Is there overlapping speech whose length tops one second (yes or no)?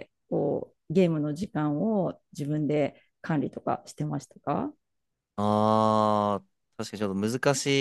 no